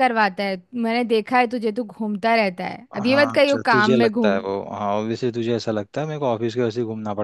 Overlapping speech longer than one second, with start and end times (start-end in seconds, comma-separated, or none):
2.9-4.4